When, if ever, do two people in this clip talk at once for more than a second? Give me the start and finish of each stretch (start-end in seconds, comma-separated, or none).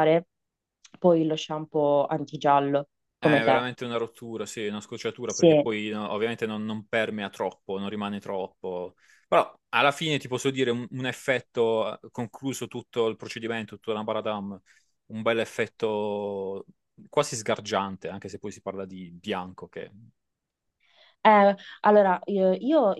none